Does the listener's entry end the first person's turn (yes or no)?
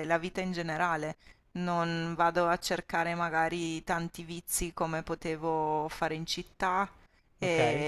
no